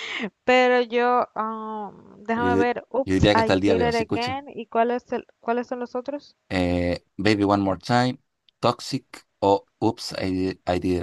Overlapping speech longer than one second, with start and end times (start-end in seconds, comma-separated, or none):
2.4-4.4